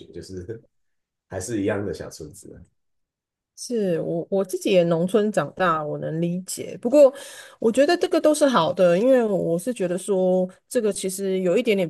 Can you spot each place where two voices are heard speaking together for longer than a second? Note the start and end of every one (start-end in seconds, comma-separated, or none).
none